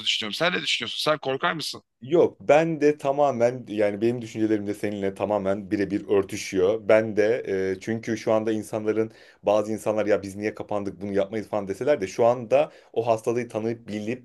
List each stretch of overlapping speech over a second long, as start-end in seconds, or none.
none